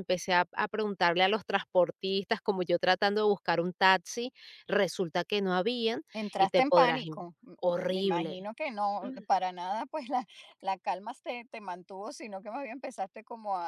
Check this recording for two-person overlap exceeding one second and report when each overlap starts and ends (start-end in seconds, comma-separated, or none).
6.1-8.5